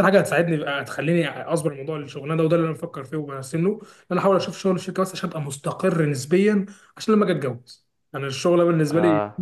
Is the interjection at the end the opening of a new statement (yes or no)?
no